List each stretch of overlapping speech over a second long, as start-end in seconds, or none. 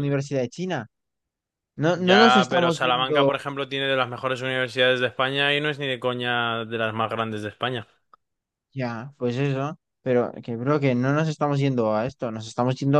1.9-3.5